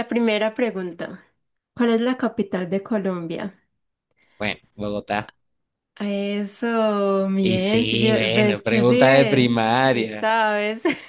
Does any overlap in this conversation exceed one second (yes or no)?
yes